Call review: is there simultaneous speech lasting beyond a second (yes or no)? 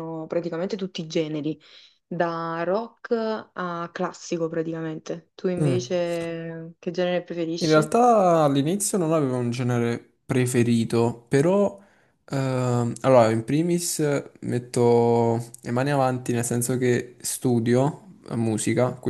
no